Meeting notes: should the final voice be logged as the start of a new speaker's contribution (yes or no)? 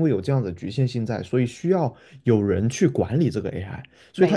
no